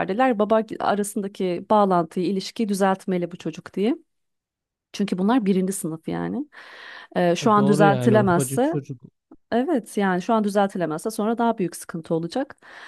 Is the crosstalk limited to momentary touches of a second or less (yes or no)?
no